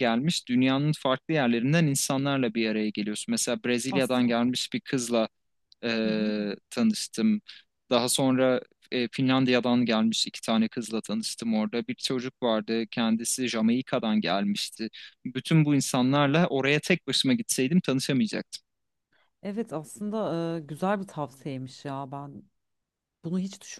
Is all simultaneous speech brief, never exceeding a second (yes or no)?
yes